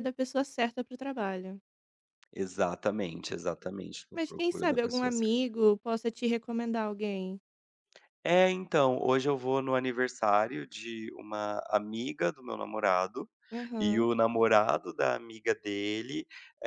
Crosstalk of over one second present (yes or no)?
yes